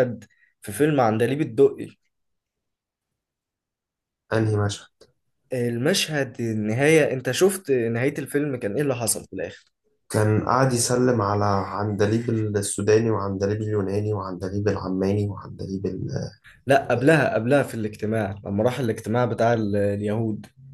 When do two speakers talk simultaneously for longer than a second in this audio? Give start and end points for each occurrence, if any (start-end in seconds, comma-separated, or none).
none